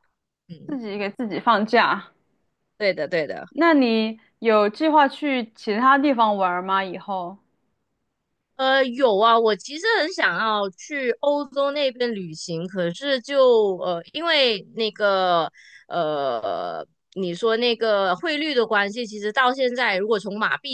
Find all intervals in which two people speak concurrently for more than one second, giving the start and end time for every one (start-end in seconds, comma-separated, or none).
none